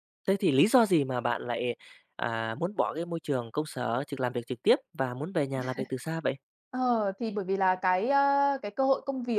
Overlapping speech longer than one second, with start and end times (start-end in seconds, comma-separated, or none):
none